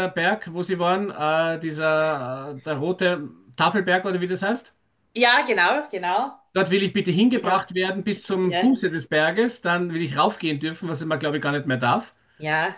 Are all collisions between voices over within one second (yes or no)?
yes